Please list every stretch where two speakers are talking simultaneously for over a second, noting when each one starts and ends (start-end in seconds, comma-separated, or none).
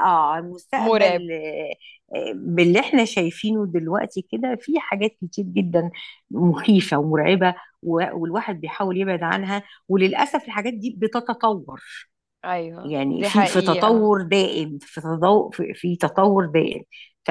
12.8-14.2